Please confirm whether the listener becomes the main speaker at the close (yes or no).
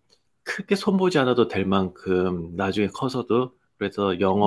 no